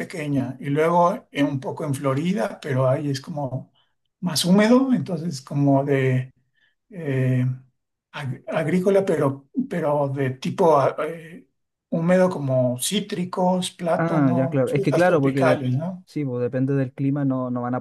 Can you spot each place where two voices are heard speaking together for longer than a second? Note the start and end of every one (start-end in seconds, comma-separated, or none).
14.0-15.6